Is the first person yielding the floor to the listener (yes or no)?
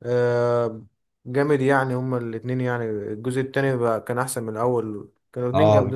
yes